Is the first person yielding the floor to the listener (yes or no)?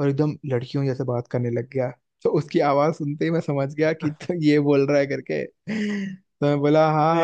no